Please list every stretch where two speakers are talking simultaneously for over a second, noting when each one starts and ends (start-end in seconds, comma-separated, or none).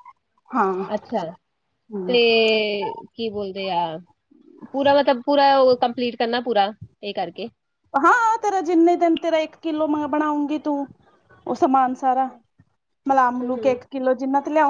none